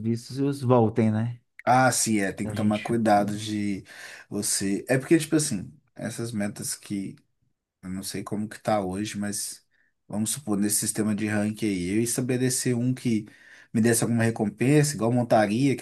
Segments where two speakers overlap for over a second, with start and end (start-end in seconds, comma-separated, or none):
none